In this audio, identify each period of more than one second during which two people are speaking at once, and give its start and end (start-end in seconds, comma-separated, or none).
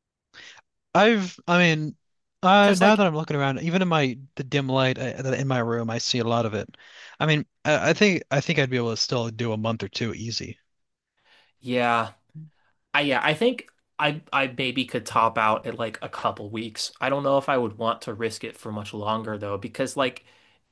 none